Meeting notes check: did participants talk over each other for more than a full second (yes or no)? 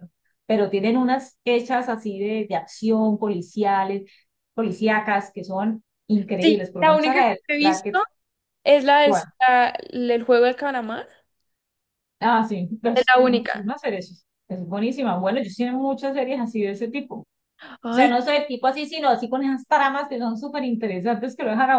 yes